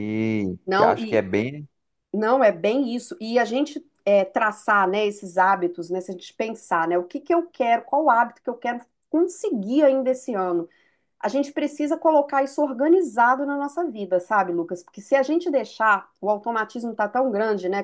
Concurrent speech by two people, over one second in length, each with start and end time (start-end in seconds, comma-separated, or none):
none